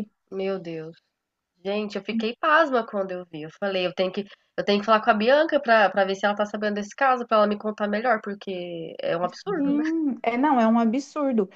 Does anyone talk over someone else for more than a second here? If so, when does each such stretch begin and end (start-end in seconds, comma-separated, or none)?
none